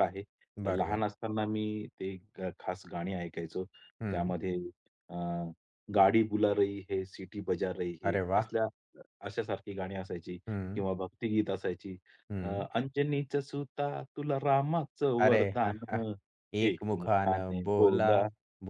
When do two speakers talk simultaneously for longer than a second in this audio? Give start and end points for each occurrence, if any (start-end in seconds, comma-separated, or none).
16.7-18.1